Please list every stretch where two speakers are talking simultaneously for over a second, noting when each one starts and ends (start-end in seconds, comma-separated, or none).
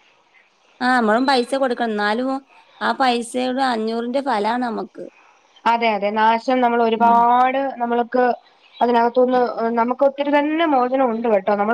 none